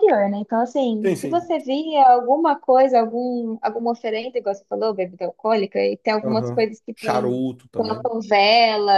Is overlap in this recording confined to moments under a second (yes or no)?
no